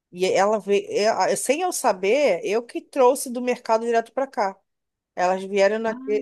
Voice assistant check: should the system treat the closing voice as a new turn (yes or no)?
no